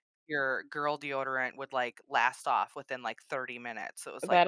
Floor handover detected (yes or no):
yes